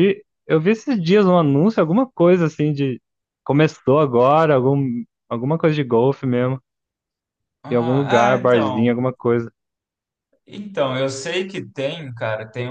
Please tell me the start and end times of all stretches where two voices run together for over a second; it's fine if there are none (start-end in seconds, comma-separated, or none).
7.7-9.0